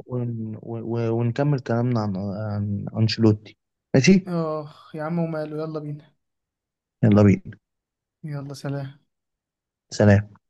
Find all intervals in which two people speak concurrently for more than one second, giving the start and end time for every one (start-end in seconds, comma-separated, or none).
none